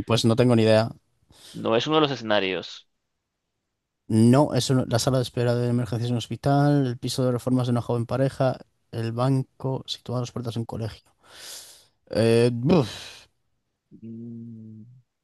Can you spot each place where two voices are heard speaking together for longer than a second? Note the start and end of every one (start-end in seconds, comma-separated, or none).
none